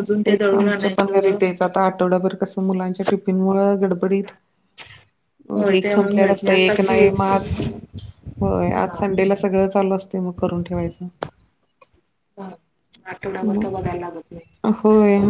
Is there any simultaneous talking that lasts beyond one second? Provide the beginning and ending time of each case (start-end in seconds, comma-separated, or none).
5.8-7.0